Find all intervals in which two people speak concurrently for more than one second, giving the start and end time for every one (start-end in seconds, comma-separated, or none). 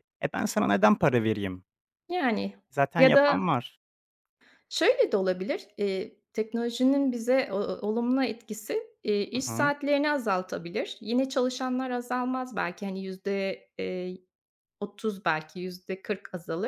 none